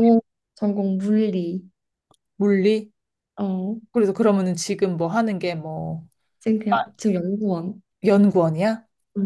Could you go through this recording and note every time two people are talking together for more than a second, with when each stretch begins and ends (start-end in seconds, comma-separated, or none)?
none